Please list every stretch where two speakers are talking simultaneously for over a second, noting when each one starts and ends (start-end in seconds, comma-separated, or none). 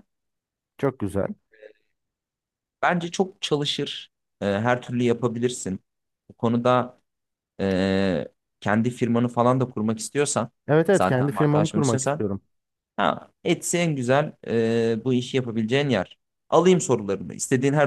10.9-12.2